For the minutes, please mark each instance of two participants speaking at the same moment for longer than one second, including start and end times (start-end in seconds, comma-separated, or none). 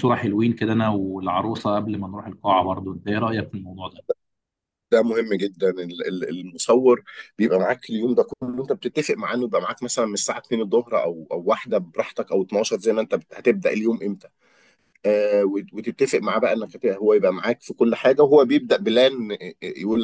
none